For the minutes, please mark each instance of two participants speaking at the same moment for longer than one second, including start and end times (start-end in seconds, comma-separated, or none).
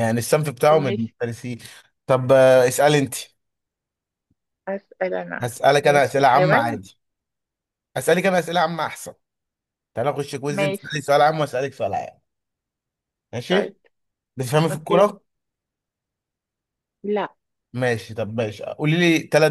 5.4-6.8